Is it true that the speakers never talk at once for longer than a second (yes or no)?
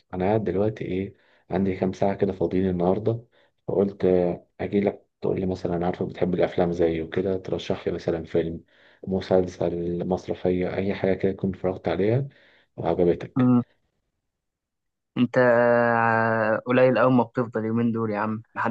yes